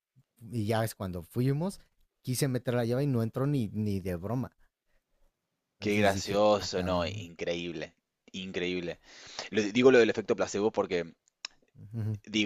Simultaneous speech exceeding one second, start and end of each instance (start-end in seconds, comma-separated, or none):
5.8-7.3